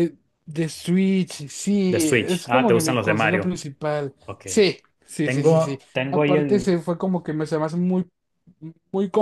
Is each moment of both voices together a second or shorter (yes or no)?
no